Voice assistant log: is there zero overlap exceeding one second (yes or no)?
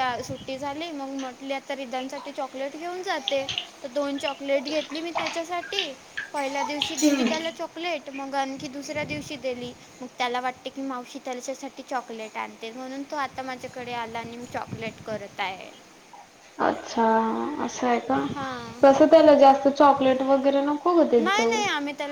yes